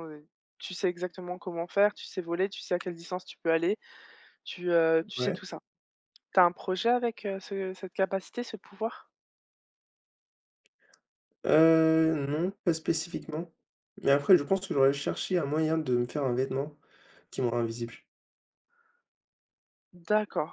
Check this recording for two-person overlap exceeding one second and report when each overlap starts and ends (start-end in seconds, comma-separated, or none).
none